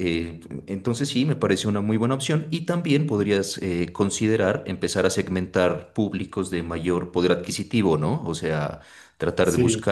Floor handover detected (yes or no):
no